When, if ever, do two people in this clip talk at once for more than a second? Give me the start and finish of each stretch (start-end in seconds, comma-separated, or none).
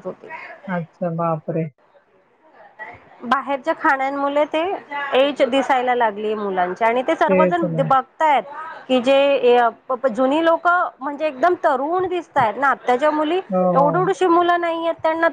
none